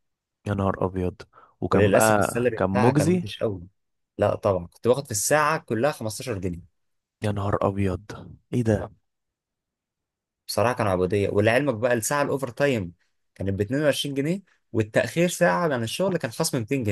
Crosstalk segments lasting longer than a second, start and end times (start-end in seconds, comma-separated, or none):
1.7-3.3